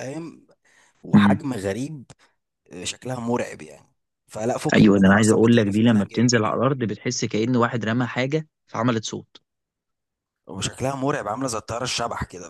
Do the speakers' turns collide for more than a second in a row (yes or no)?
yes